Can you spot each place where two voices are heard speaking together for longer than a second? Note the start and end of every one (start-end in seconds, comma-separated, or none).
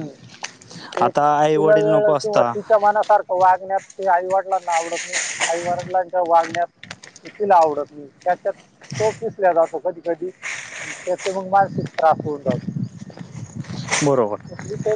1.0-2.5